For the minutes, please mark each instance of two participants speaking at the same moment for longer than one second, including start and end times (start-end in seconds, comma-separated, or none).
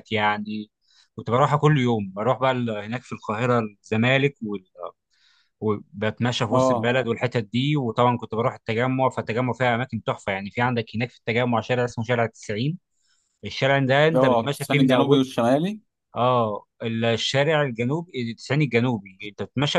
14.1-15.4